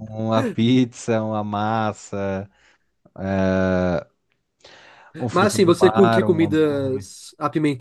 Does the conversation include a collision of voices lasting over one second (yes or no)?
yes